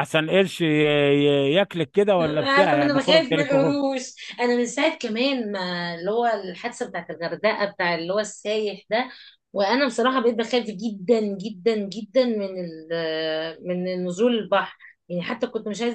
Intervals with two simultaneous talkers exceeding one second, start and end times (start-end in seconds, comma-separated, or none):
2.2-3.8